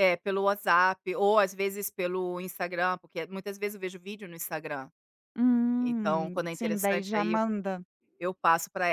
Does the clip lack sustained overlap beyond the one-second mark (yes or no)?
no